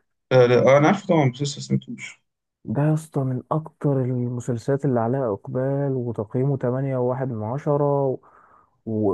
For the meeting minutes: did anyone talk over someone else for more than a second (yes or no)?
no